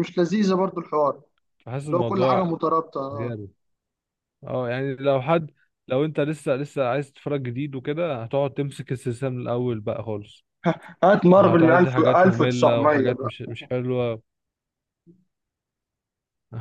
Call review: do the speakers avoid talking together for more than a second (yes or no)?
no